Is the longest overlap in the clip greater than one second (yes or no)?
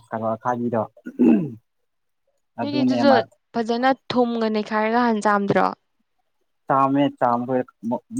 no